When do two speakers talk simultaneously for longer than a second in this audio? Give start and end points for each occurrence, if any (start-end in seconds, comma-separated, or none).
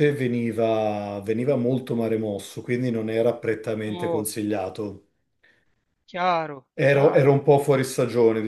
none